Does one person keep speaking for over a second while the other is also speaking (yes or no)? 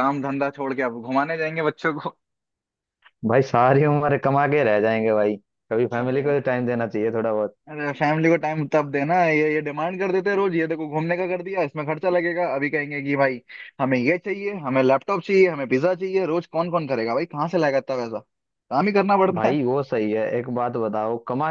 no